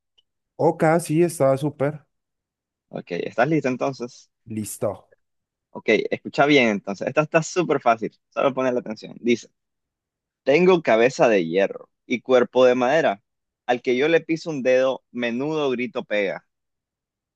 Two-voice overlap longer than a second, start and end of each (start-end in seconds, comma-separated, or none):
none